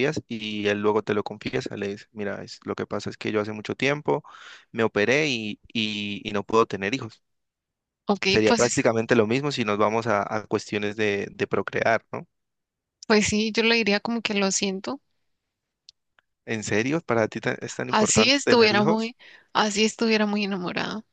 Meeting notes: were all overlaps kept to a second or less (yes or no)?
no